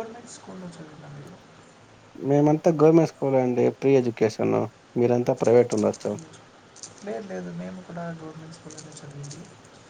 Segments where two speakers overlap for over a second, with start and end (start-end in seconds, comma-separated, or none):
none